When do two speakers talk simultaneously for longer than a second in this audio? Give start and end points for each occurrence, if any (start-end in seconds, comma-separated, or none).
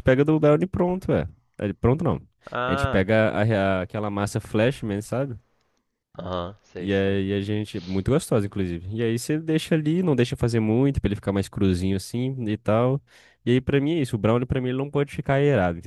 none